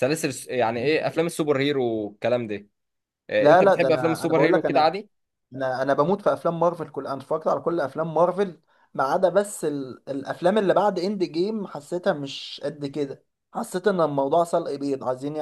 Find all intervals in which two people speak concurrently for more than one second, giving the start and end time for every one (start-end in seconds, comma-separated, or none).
3.4-4.9